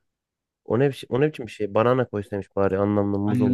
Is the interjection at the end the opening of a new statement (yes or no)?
yes